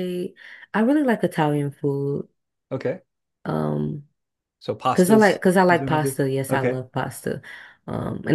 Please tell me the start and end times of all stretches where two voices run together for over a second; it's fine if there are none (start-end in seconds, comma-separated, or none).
4.9-6.8